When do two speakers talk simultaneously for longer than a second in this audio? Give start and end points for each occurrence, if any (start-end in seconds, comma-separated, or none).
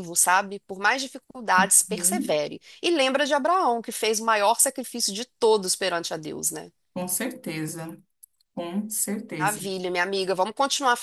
none